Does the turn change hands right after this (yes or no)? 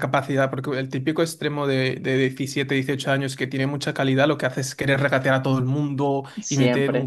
no